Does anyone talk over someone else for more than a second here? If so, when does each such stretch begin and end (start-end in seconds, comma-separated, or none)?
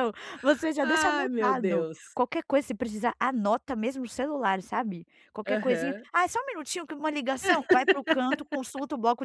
0.8-2.0